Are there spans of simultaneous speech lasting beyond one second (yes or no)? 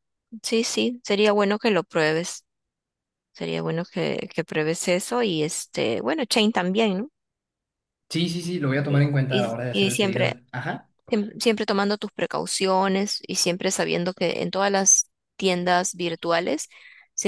yes